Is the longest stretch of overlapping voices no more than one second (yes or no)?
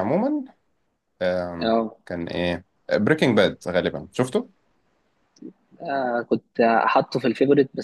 yes